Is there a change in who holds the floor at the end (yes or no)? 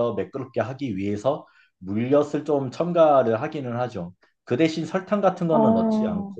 no